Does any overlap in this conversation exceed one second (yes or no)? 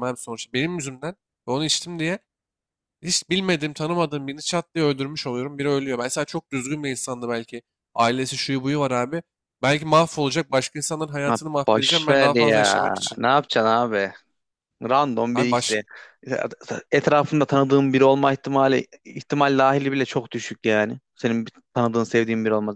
yes